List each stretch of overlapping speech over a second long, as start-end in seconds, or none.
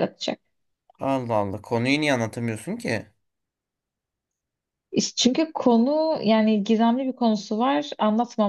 none